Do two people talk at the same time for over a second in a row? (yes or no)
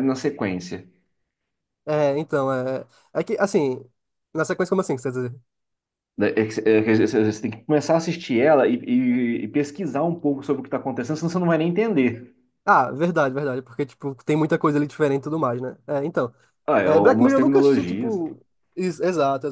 yes